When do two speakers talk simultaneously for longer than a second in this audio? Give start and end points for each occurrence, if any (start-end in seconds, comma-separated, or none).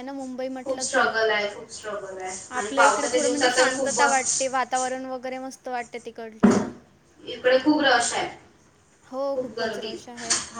2.6-4.5